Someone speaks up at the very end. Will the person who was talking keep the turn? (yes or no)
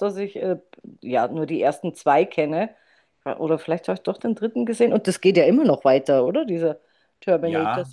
no